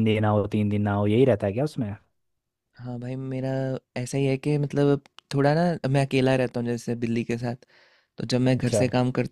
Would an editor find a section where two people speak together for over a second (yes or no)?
no